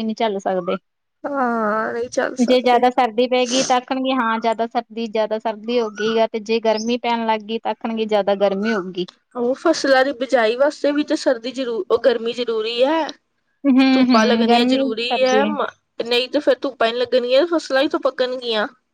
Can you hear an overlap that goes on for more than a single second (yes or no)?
yes